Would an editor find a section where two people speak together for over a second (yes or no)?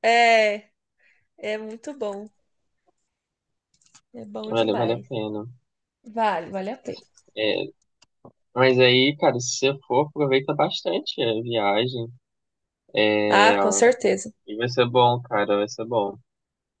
no